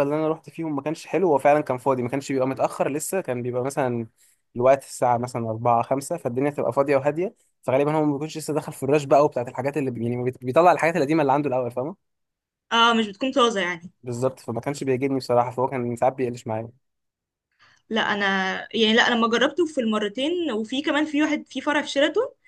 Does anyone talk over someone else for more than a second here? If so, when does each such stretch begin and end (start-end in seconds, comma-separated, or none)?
none